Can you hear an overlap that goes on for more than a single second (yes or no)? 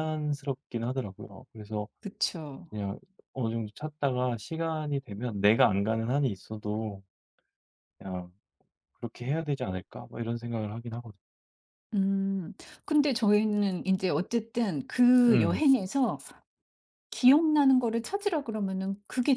no